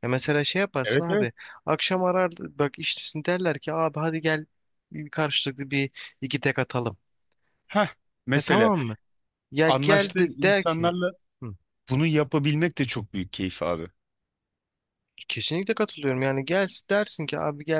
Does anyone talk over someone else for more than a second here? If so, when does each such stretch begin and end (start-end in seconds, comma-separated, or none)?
9.7-10.9